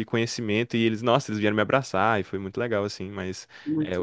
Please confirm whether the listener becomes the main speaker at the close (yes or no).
no